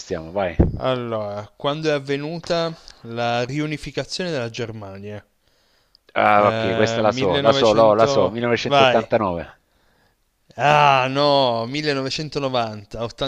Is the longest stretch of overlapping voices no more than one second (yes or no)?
no